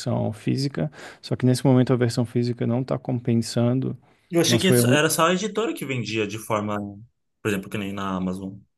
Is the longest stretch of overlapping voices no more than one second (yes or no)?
yes